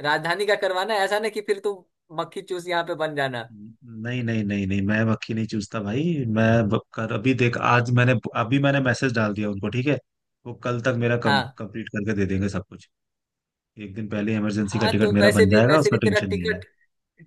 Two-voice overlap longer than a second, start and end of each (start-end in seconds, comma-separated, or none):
14.7-16.6